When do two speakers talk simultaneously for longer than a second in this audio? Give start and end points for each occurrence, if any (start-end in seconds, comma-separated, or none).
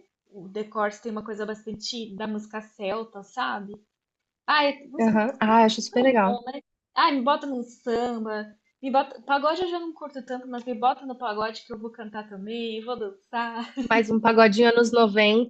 none